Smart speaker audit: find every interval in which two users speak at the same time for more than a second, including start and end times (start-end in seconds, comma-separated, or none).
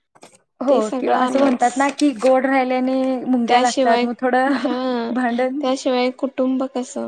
none